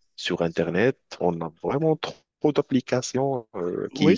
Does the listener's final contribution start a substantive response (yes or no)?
no